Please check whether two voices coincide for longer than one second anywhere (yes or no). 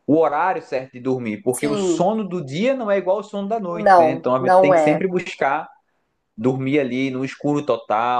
yes